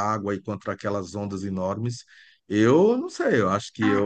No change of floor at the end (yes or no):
no